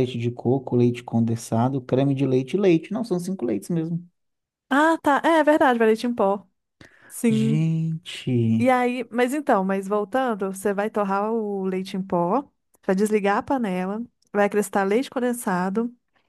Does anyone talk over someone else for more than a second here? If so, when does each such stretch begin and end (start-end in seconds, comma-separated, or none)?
none